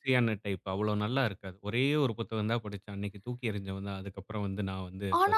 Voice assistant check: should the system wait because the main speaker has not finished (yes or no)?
no